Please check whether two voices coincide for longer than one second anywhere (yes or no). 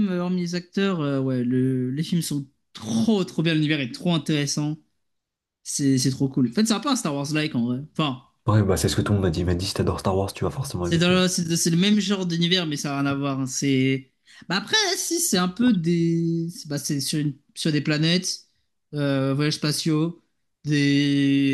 no